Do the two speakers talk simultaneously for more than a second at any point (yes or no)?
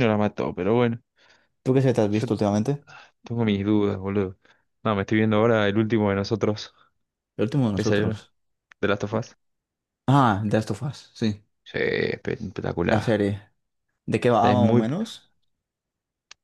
no